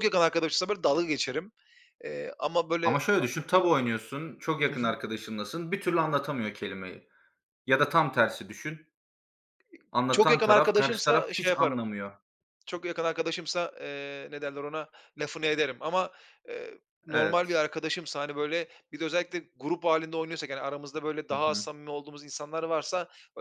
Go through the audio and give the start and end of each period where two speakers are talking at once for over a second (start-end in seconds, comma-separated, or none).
10.1-11.8